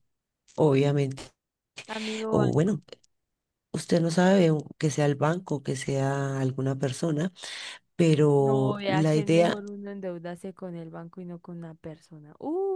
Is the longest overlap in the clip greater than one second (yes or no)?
yes